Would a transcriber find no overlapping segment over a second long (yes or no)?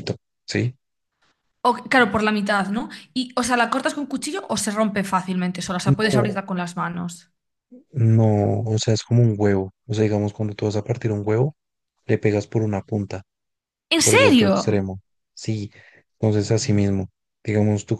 yes